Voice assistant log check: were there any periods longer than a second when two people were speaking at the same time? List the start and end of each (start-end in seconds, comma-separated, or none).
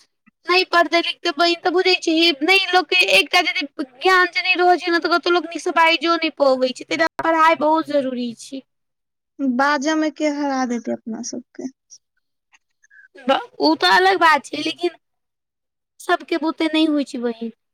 none